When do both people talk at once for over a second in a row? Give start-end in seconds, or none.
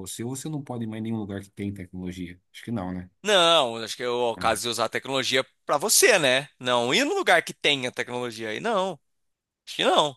none